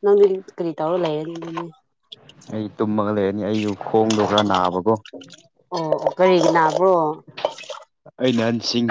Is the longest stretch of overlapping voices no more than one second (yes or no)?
yes